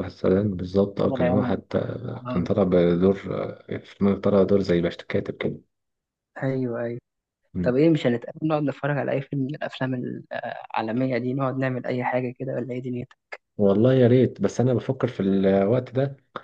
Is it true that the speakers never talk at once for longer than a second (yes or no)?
yes